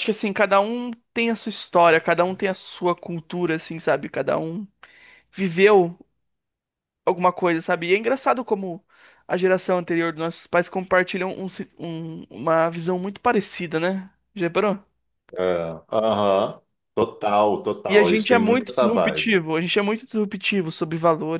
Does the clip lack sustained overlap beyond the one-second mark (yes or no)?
no